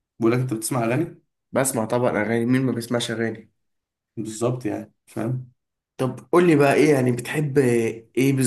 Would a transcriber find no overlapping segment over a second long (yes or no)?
yes